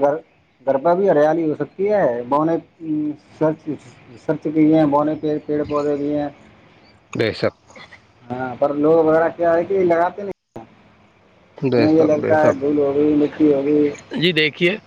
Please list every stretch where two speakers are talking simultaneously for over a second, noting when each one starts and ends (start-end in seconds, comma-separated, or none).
none